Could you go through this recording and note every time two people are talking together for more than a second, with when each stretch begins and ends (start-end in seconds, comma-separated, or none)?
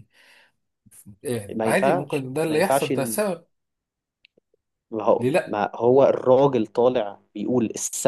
1.6-3.2